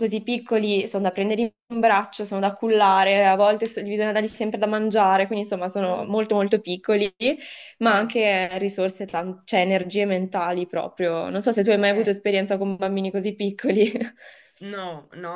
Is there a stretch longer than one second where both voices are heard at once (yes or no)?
no